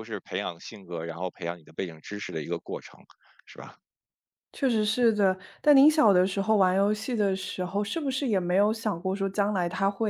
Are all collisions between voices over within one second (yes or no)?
yes